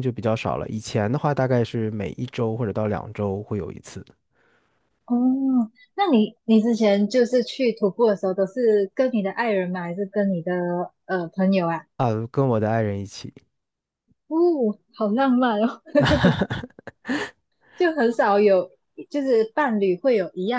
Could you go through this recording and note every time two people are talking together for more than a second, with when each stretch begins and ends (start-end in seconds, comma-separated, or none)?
none